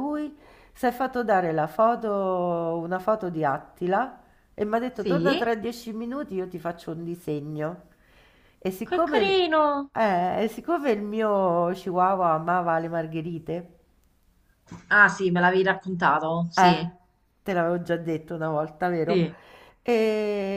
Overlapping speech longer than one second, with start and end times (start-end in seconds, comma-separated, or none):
none